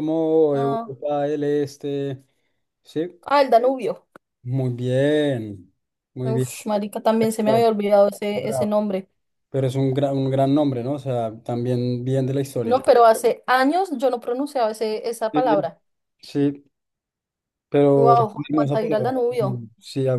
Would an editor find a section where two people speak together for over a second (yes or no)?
yes